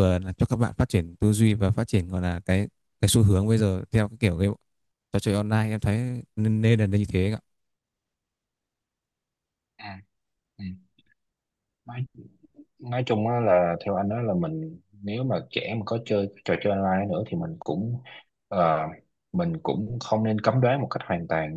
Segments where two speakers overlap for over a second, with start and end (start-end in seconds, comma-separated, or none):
none